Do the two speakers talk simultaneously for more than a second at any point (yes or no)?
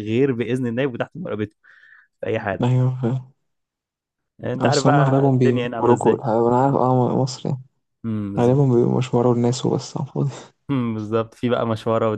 yes